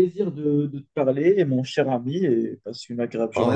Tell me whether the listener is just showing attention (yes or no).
no